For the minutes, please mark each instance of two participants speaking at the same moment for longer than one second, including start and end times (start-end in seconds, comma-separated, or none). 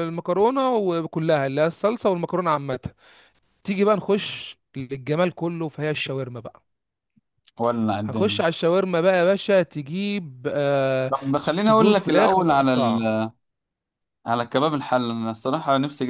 11.1-13.2